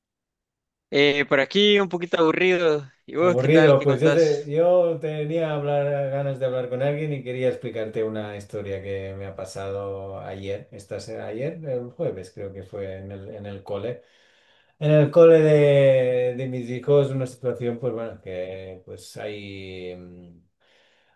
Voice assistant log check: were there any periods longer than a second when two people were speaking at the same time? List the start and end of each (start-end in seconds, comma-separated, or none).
3.2-4.5